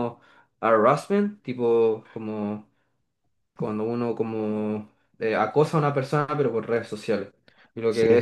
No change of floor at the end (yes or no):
yes